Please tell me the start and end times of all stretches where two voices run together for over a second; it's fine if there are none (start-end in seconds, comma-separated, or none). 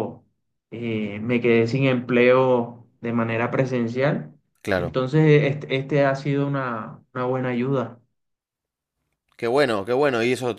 none